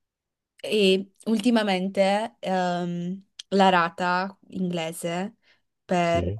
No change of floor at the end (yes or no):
yes